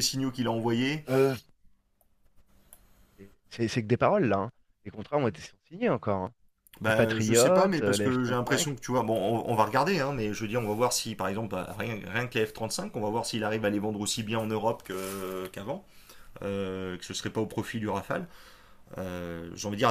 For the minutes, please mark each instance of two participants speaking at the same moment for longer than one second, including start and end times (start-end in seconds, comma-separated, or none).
6.8-8.8